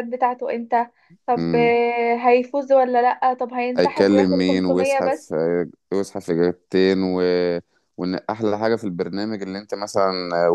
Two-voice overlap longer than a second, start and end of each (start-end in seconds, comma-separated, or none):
3.8-5.3